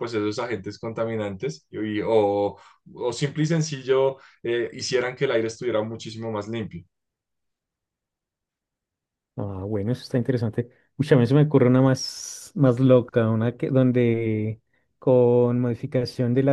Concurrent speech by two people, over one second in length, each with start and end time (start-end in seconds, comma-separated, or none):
none